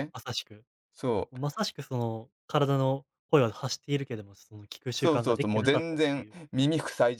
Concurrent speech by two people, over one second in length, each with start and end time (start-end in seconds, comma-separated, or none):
4.9-6.3